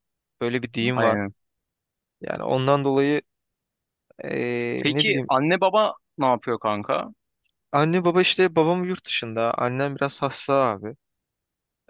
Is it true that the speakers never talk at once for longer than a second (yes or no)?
yes